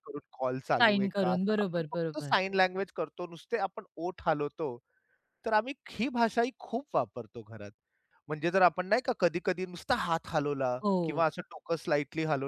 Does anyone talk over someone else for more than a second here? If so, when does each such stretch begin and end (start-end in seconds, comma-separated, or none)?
0.8-2.3